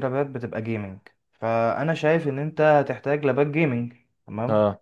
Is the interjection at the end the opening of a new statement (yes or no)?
no